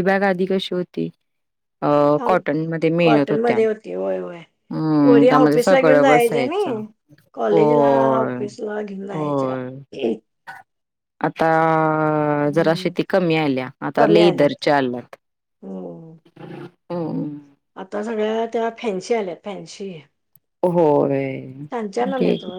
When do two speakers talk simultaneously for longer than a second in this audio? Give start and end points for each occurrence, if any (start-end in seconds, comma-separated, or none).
5.0-6.7